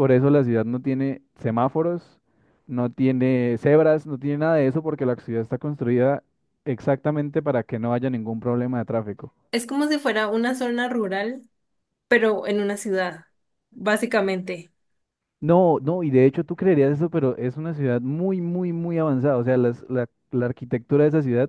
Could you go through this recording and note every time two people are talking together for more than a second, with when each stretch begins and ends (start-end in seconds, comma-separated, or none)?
none